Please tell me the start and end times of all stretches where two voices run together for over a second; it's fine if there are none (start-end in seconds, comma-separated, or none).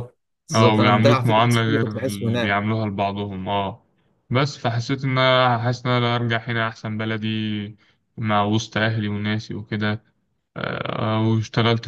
0.5-2.7